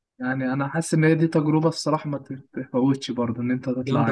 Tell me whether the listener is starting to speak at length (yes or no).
yes